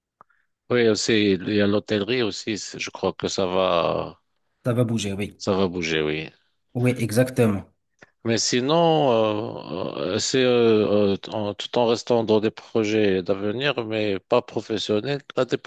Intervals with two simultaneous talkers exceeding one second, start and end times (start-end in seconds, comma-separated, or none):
none